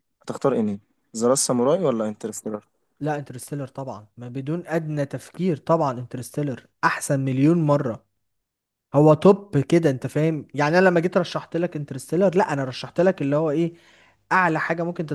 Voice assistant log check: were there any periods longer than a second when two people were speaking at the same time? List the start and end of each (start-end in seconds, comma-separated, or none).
none